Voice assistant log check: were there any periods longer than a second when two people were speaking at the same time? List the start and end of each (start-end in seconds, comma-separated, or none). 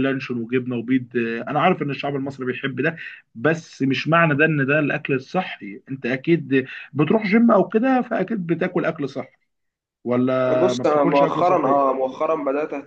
10.6-11.8